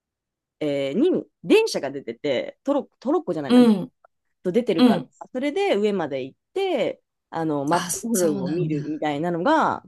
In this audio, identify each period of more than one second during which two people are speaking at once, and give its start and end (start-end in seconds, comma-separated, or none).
7.7-9.0